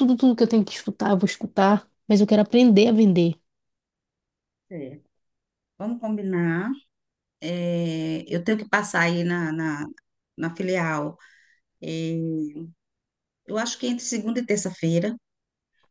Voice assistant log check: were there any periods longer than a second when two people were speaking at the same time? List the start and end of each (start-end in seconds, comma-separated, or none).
none